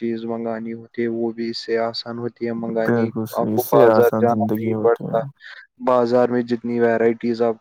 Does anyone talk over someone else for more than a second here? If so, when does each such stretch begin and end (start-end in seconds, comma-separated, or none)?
2.8-5.2